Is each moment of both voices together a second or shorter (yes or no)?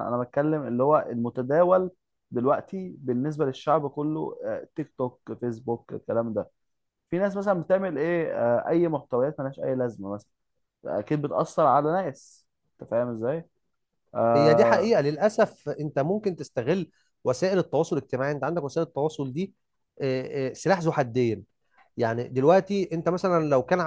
yes